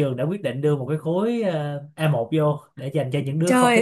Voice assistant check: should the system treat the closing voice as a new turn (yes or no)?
yes